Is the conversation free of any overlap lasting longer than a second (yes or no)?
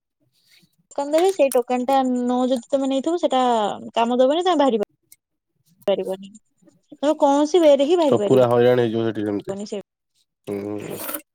no